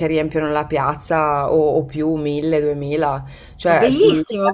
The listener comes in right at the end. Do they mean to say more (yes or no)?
yes